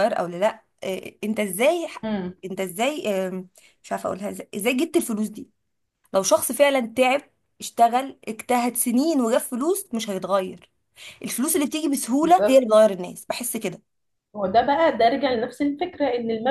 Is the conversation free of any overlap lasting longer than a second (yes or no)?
yes